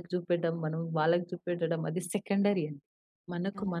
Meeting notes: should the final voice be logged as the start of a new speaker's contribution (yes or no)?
no